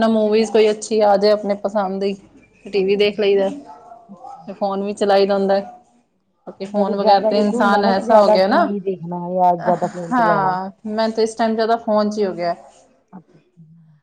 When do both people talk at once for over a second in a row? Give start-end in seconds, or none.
6.8-8.7